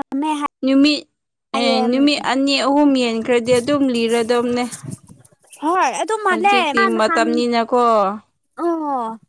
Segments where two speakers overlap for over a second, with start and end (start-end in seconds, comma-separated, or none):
none